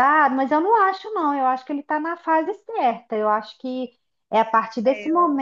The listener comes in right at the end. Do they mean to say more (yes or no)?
no